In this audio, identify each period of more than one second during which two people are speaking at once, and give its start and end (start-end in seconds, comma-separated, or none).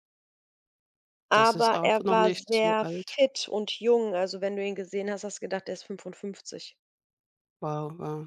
1.3-3.2